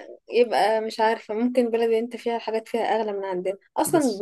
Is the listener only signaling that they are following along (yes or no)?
yes